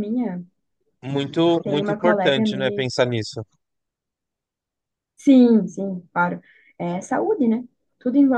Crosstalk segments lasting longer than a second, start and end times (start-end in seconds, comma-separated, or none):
1.6-2.9